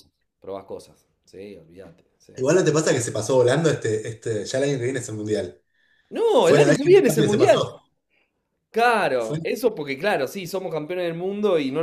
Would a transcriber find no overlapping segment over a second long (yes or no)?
no